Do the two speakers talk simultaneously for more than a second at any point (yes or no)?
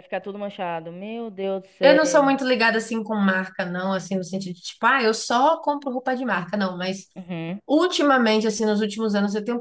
no